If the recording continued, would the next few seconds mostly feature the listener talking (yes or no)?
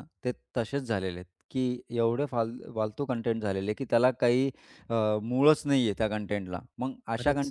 no